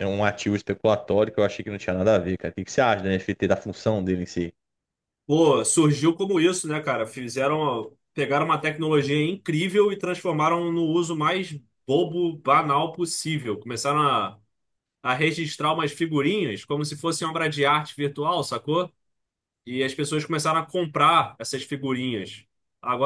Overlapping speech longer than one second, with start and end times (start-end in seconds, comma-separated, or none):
none